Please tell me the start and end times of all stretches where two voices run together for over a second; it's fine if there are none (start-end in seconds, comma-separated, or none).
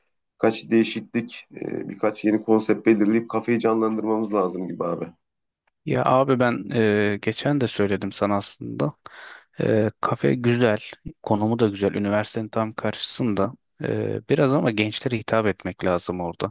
none